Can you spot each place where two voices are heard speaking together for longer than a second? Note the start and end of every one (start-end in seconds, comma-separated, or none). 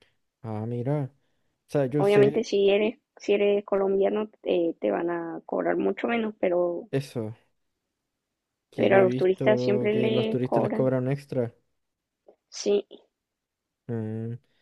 8.8-10.9